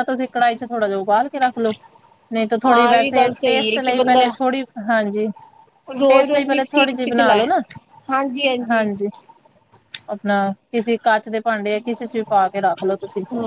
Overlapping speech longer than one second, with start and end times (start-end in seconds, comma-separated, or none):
2.6-4.3, 6.1-7.5